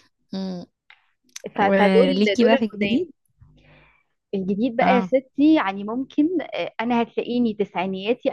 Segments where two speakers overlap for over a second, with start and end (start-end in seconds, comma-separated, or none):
1.6-3.1